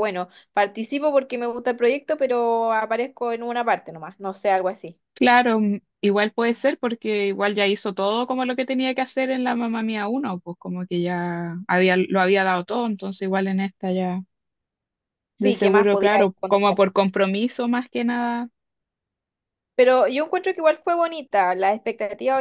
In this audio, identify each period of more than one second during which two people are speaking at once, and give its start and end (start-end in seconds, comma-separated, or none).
15.4-16.8